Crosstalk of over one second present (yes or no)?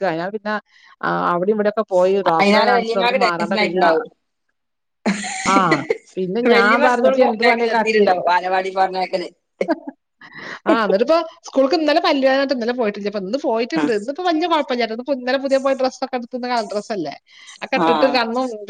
yes